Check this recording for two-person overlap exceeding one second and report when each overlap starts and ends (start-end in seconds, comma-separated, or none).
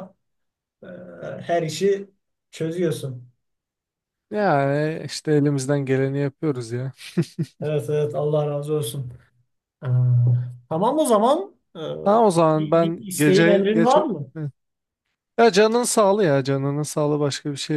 12.6-14.1